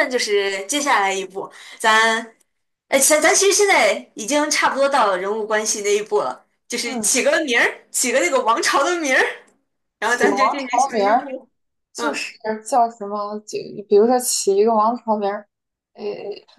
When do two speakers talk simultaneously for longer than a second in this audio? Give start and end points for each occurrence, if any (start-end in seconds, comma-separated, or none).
10.0-11.3